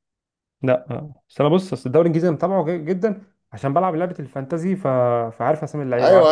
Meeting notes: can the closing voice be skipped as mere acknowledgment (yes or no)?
no